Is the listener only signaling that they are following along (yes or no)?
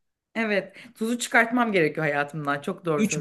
no